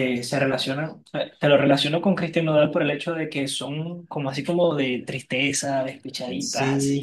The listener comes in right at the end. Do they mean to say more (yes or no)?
yes